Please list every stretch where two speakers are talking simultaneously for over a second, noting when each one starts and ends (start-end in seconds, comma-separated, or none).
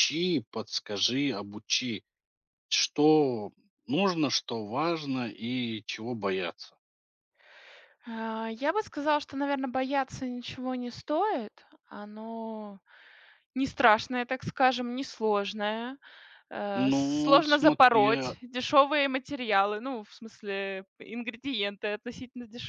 16.8-18.4